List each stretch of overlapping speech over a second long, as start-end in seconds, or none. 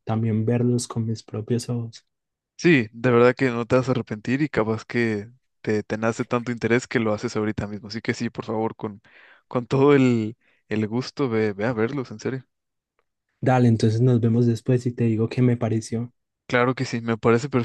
none